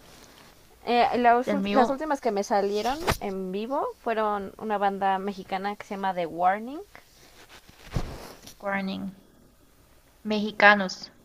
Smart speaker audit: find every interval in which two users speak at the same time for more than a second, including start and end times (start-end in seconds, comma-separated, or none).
none